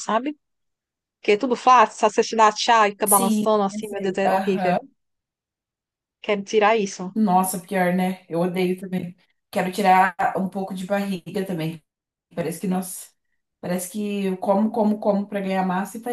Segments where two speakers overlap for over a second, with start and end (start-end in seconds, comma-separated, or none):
3.0-4.8